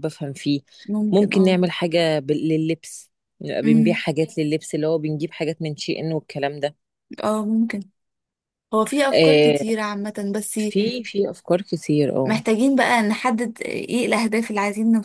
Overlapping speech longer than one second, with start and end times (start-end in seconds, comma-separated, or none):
none